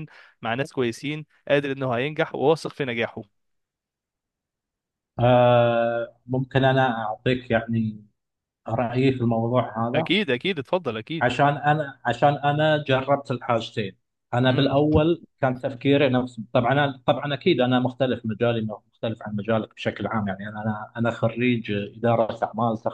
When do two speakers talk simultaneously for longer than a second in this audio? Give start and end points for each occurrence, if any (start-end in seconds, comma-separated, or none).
none